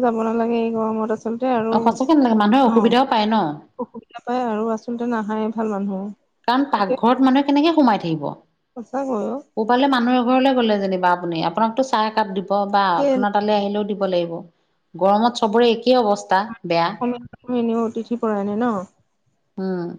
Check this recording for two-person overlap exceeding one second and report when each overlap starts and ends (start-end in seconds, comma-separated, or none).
1.8-3.4